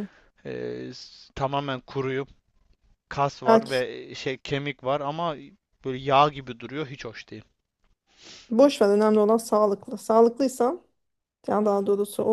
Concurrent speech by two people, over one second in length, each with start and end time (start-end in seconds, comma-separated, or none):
none